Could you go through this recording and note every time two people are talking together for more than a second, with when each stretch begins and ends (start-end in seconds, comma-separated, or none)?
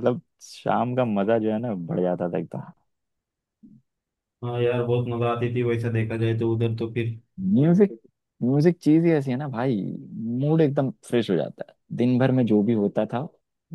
none